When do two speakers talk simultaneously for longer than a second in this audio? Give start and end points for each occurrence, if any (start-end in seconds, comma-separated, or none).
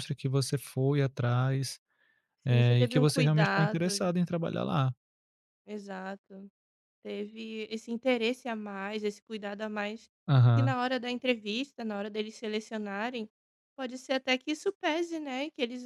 2.5-4.0